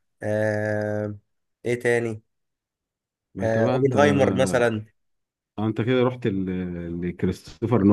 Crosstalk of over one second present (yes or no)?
yes